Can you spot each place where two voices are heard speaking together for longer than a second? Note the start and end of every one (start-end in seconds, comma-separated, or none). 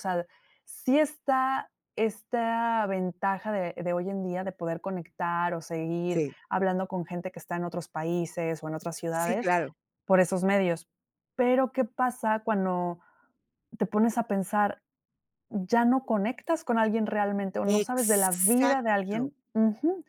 17.8-19.3